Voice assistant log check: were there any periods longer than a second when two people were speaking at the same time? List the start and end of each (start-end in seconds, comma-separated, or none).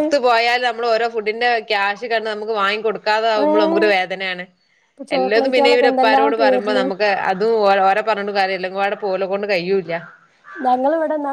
5.2-6.8